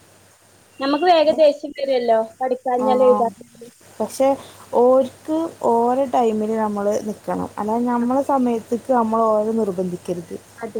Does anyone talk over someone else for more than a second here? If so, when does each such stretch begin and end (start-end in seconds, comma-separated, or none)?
none